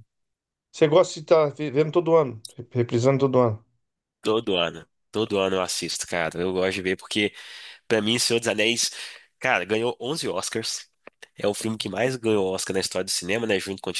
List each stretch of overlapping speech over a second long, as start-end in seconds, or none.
none